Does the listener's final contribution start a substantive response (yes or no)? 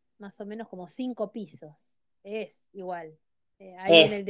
no